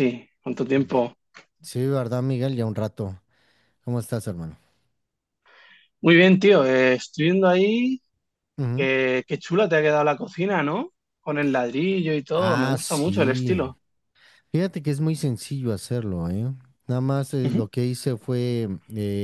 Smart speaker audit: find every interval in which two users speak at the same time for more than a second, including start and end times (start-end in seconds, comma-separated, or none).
12.3-13.6